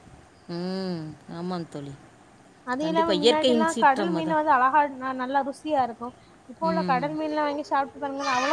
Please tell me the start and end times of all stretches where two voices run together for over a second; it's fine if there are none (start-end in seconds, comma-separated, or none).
2.8-4.4